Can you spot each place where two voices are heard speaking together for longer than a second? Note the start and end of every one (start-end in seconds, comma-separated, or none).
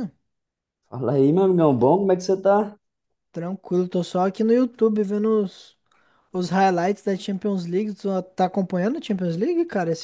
none